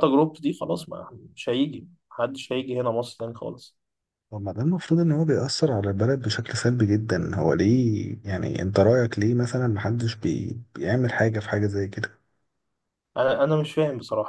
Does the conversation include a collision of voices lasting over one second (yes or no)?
no